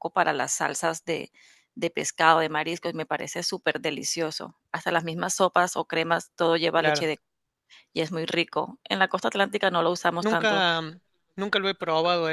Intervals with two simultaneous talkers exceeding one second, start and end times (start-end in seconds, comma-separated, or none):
none